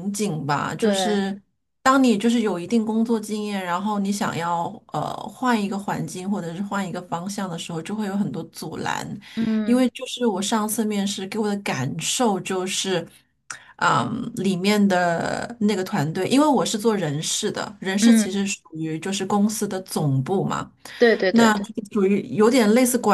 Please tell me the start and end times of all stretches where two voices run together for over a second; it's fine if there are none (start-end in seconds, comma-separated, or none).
none